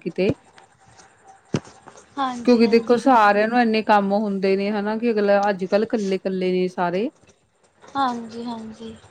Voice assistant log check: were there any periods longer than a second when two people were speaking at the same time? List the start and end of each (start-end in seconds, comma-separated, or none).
none